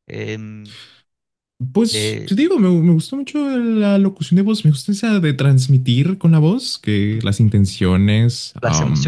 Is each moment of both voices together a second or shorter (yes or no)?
yes